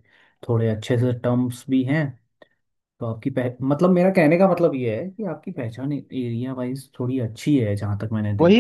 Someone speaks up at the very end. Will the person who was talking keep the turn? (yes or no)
no